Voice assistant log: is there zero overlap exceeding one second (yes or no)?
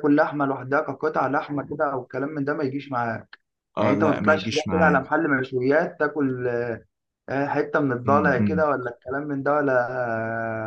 no